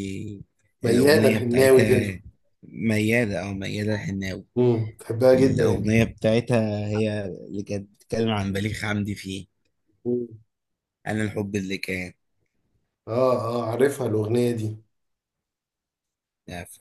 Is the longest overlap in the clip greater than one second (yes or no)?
yes